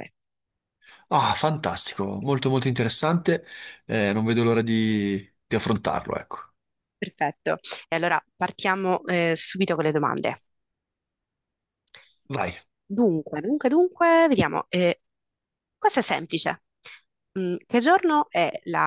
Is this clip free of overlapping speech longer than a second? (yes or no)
yes